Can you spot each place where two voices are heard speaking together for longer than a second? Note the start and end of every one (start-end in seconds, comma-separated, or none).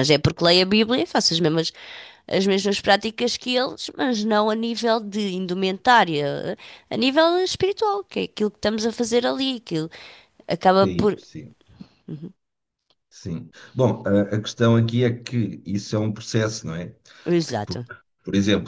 none